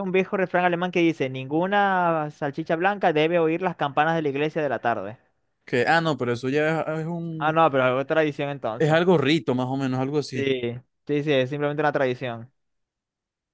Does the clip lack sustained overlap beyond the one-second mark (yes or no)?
yes